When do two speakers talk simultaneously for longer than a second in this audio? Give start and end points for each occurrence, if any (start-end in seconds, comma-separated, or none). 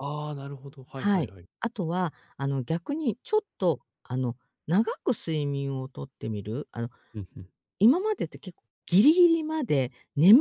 none